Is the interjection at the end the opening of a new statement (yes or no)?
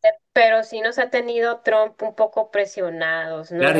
yes